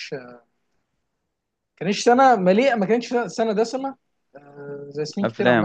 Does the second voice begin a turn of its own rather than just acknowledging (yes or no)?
no